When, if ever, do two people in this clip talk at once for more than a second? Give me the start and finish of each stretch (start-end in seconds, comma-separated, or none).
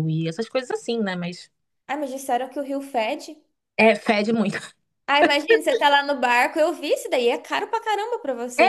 none